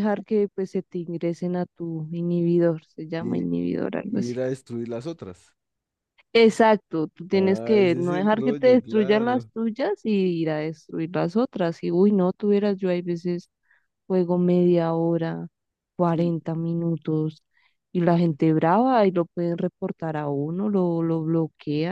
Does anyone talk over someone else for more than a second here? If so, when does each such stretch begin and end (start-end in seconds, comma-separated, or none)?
7.3-9.5